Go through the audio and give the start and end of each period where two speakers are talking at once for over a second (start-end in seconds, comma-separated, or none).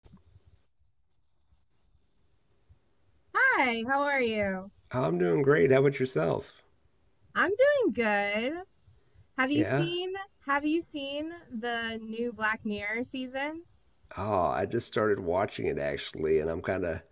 none